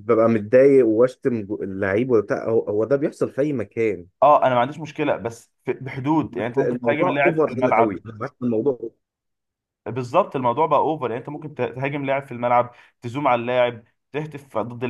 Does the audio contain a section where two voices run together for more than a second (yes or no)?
yes